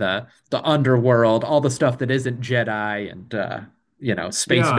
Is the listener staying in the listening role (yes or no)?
no